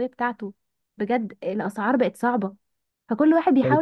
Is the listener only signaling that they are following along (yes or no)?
yes